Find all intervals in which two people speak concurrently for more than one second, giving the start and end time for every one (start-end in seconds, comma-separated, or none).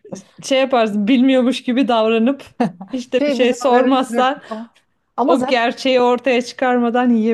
3.2-4.4